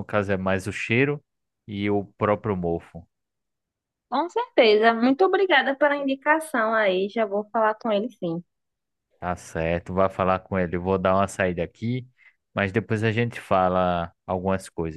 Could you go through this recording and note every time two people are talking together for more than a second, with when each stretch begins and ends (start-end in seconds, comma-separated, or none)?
none